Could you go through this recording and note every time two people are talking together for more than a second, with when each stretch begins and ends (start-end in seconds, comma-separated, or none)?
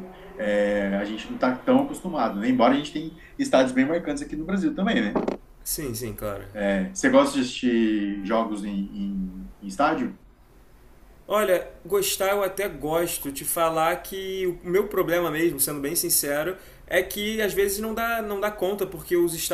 none